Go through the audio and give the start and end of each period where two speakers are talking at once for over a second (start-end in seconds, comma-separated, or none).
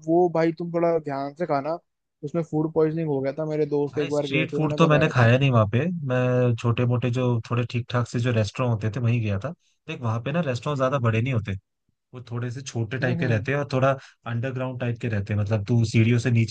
3.9-5.3